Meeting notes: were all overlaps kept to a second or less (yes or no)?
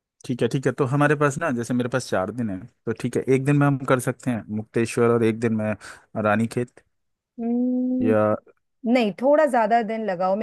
yes